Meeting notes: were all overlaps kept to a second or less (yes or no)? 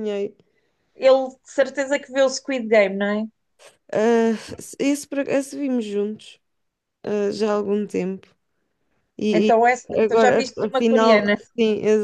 no